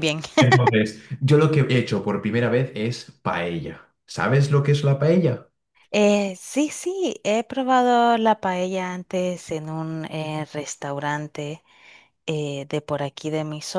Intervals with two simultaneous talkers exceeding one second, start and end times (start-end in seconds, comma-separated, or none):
none